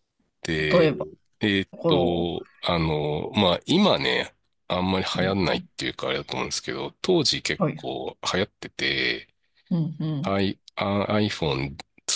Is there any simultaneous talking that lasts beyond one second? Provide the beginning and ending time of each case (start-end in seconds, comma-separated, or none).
none